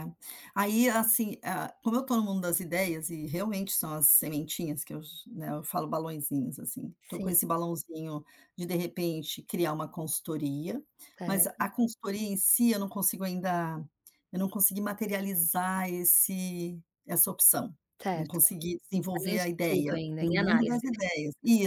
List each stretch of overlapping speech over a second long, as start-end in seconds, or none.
19.1-20.8